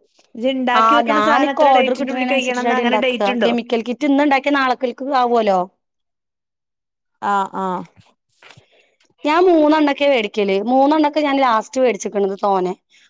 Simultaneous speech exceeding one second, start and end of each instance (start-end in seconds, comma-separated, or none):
1.0-3.5